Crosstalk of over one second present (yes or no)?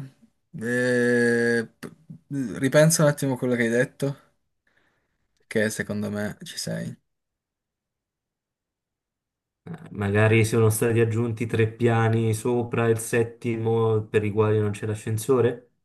no